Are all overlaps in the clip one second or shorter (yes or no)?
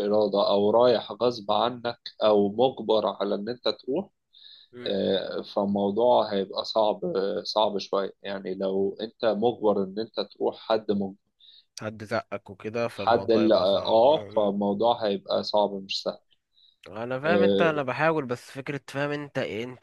no